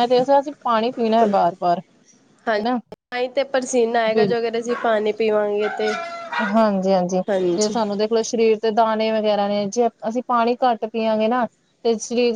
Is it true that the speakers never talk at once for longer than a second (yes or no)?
yes